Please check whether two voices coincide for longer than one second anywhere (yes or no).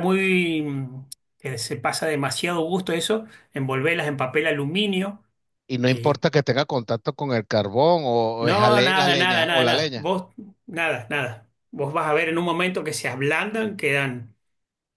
yes